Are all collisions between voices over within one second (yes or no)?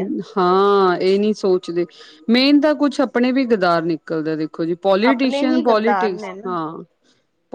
no